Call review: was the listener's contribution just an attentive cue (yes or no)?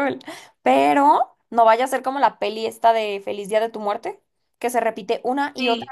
yes